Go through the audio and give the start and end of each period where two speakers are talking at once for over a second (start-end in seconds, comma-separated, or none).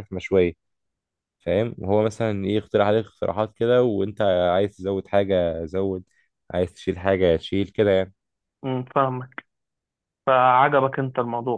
none